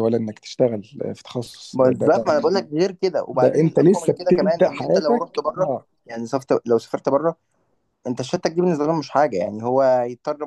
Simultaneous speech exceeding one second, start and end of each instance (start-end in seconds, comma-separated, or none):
3.3-5.9